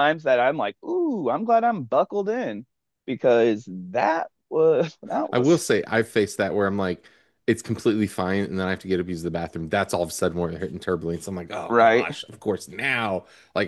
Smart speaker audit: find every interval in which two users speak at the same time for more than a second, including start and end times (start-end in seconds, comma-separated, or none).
none